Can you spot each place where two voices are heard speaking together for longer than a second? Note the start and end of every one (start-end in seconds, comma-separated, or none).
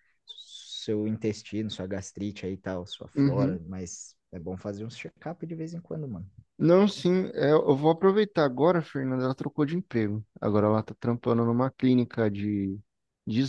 none